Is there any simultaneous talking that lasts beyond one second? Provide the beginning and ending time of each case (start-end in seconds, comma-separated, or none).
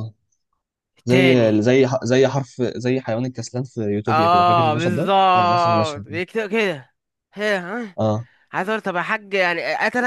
4.1-6.2